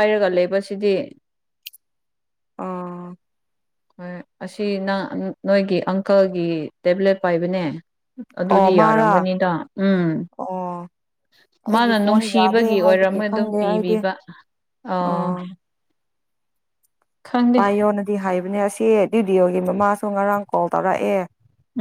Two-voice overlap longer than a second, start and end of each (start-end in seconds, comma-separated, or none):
11.7-13.9